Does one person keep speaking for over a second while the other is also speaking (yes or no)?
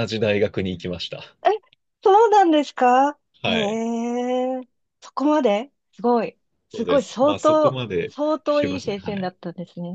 yes